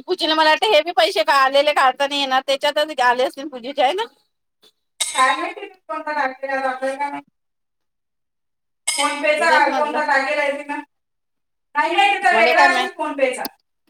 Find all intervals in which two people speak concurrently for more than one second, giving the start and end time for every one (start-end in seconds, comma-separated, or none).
none